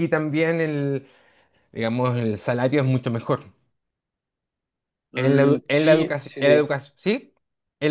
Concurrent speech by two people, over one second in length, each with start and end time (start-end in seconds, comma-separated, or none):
5.2-6.6